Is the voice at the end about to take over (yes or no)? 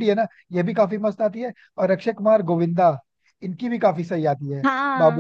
yes